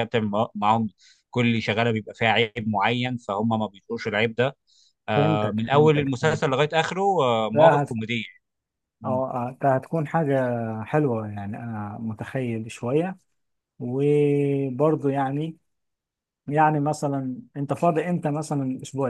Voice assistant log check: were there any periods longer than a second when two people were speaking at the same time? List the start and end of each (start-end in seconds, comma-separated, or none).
5.1-6.5